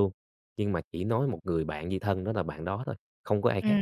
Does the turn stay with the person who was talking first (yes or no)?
no